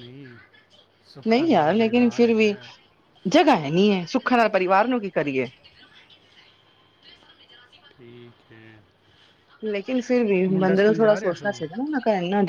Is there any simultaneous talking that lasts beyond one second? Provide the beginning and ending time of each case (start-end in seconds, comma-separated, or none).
1.3-2.5